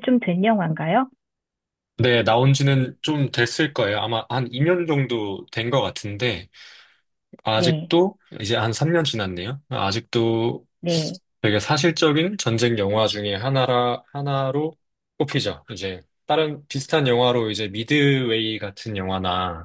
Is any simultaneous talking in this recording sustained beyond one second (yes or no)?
no